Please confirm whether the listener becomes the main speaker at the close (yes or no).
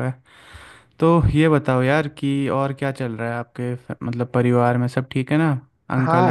yes